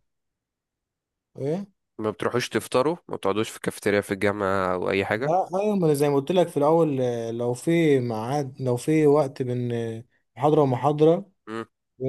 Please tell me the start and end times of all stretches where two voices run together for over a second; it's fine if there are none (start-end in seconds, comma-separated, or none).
none